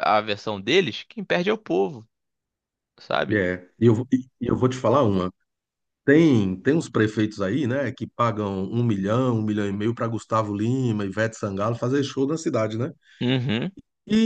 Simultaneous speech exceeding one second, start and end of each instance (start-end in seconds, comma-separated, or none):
none